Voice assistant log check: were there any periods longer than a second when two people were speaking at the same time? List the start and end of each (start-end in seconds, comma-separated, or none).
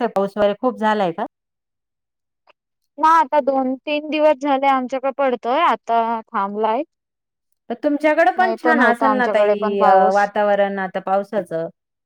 8.4-10.2